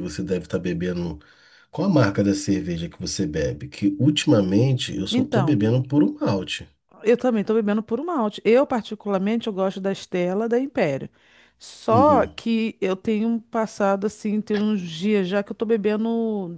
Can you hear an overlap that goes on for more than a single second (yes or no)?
no